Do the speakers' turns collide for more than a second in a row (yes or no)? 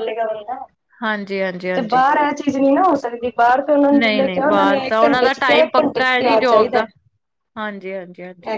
yes